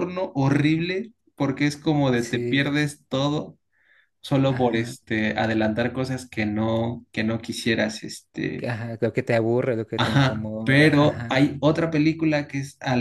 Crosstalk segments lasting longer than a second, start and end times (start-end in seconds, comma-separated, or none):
10.0-11.3